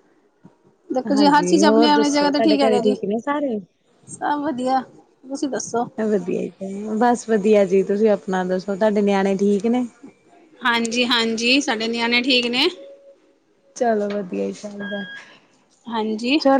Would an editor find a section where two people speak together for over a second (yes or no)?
yes